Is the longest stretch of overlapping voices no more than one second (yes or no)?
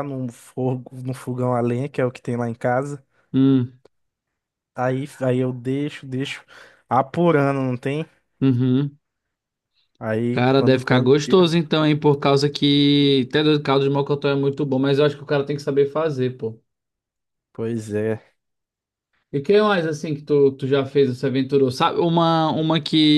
no